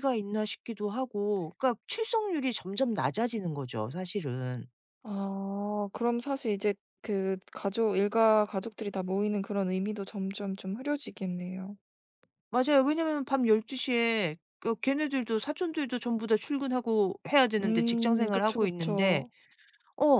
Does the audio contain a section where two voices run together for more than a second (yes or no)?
yes